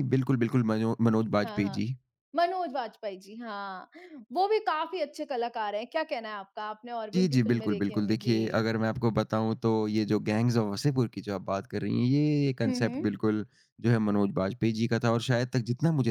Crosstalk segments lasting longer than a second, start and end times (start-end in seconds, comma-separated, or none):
7.1-8.3